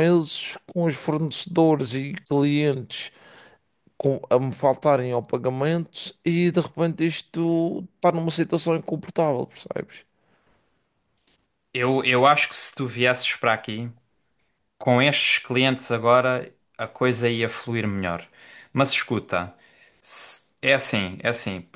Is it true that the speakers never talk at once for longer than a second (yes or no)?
yes